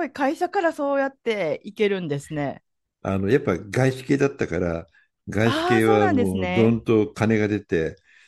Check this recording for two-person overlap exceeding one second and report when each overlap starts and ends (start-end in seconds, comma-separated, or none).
5.4-6.8